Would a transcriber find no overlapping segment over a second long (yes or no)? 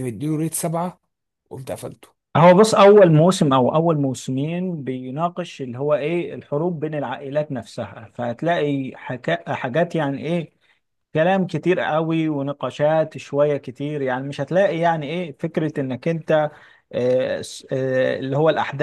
yes